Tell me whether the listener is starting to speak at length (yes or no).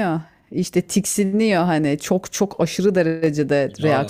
yes